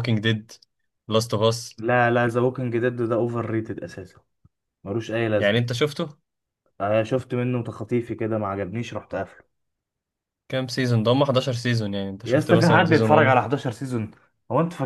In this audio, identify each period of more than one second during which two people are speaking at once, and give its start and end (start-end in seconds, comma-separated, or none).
12.2-13.5